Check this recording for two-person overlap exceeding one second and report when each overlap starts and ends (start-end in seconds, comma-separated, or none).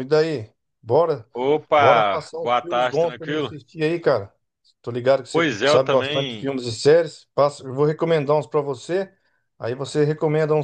1.8-3.5, 5.3-6.5